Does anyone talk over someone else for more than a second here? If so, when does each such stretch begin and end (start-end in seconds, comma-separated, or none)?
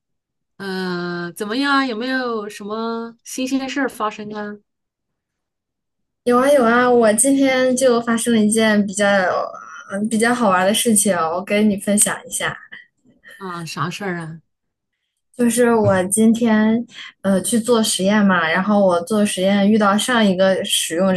none